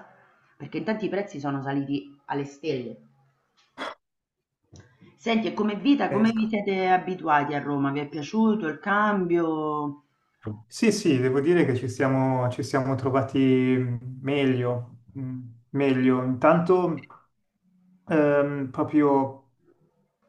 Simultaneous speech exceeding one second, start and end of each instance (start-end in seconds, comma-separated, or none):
none